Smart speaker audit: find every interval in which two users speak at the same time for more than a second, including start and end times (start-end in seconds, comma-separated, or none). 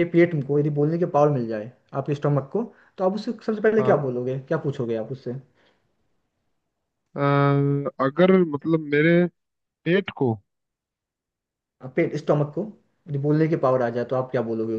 none